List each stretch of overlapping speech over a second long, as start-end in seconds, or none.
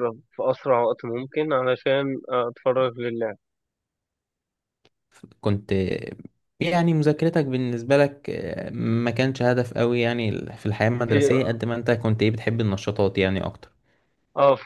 none